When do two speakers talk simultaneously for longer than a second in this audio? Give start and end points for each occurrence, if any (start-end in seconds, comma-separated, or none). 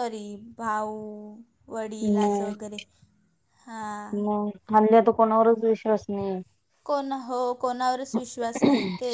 none